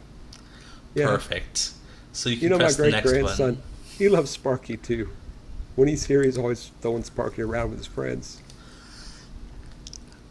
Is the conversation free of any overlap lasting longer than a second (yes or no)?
no